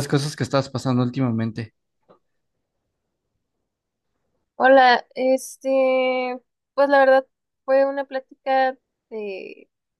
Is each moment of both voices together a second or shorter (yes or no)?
yes